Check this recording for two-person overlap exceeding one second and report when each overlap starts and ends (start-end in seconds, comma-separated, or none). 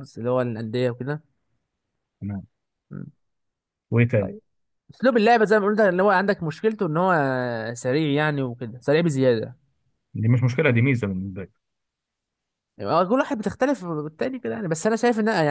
none